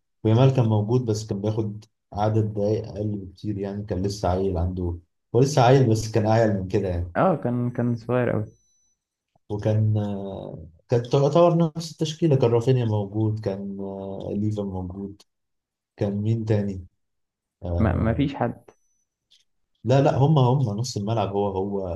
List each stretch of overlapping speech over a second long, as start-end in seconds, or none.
none